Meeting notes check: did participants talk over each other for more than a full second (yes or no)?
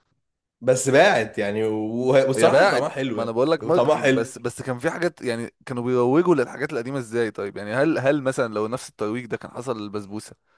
yes